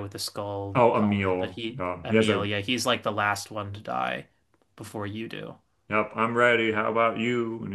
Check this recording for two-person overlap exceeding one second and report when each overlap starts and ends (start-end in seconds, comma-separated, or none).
0.7-2.5